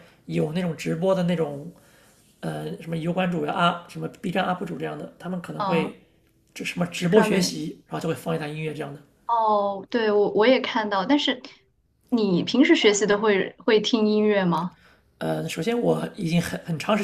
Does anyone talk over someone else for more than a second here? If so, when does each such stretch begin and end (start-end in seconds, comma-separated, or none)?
none